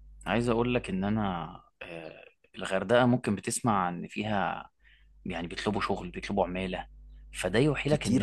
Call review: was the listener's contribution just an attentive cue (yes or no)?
yes